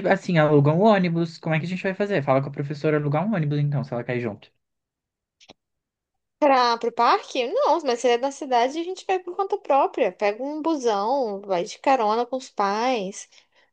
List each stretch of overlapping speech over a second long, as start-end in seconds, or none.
none